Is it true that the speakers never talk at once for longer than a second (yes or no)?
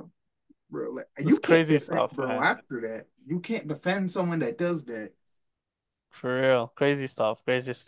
no